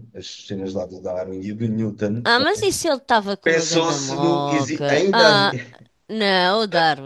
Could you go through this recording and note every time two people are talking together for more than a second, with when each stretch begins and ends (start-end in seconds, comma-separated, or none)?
3.4-5.3